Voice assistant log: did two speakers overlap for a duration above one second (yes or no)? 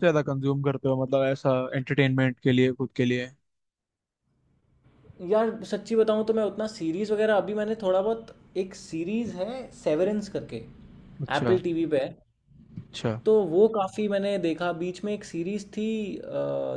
no